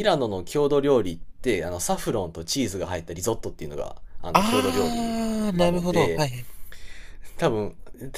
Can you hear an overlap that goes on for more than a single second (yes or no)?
yes